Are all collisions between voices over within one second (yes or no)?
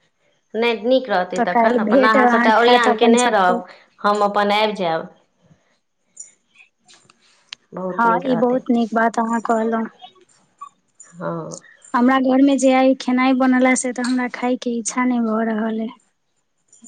no